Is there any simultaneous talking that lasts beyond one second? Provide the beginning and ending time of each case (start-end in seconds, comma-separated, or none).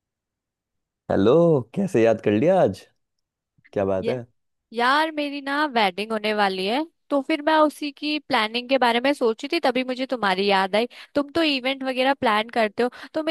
none